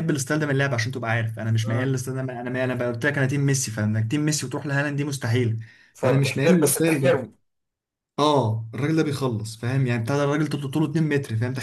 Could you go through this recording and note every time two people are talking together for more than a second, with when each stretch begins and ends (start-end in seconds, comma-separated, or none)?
5.9-7.3